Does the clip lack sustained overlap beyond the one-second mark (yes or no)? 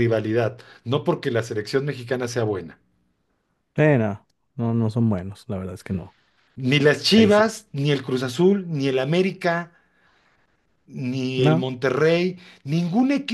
yes